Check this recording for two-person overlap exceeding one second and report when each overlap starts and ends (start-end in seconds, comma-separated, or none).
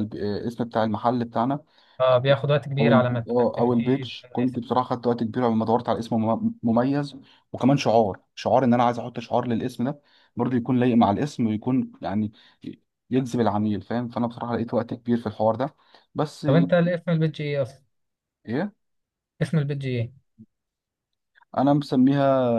2.8-4.6